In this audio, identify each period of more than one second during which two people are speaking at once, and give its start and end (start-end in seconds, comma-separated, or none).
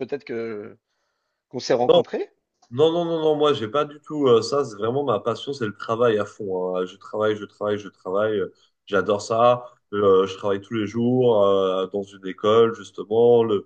none